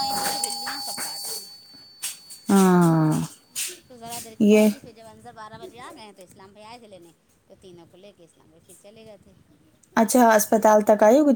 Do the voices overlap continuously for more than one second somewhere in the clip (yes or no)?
no